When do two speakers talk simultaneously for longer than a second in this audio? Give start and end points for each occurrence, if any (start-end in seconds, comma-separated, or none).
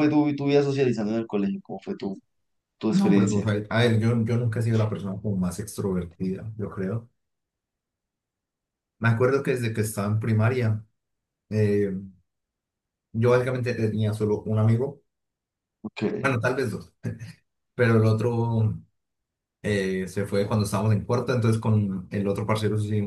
none